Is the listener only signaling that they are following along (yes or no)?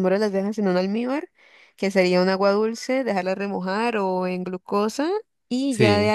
yes